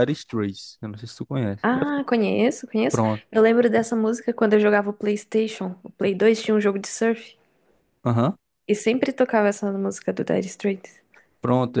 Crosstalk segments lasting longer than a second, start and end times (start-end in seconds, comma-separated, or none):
none